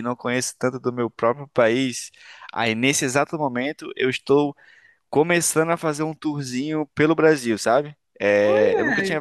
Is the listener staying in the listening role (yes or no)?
yes